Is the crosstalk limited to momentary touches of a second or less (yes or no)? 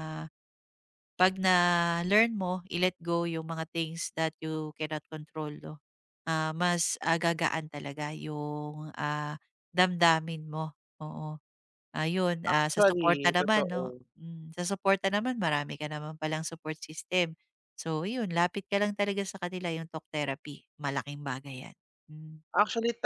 no